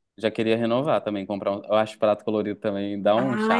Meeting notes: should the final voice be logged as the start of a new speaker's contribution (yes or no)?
yes